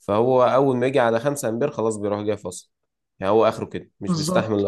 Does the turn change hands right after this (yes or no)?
yes